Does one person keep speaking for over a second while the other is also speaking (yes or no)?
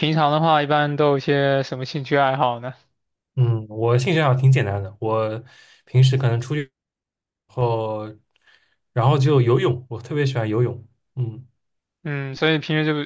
no